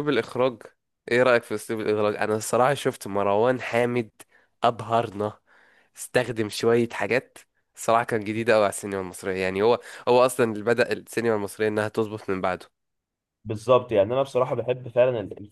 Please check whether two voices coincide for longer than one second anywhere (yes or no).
no